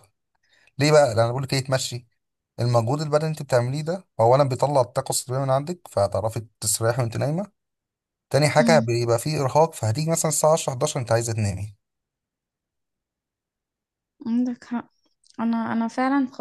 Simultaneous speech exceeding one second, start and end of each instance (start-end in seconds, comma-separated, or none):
none